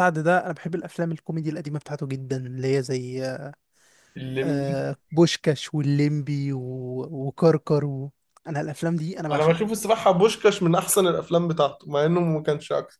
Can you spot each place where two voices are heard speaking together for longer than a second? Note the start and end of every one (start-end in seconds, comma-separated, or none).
none